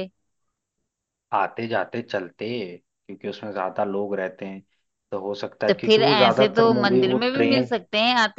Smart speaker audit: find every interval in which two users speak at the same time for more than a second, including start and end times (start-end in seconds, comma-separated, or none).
5.7-7.7